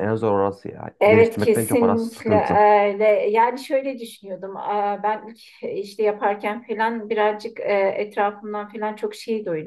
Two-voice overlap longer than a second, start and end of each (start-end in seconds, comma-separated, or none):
1.0-2.6